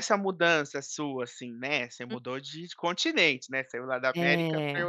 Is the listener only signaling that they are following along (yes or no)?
yes